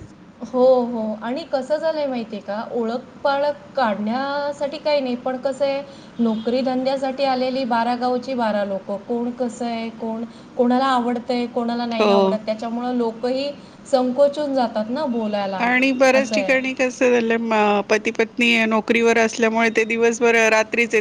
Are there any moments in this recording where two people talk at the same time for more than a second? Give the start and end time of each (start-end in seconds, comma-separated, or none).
none